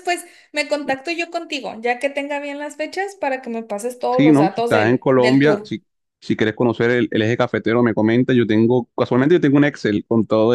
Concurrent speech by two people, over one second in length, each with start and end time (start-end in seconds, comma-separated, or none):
4.1-5.7